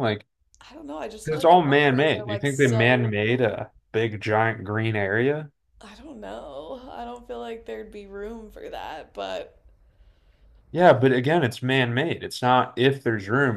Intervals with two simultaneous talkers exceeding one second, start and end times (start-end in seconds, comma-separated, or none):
1.2-3.1